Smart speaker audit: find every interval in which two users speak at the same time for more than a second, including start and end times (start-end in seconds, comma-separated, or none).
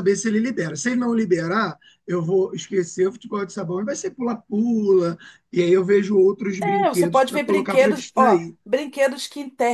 6.6-8.6